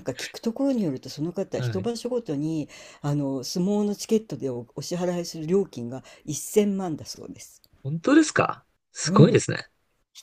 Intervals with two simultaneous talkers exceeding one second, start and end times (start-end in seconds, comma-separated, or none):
none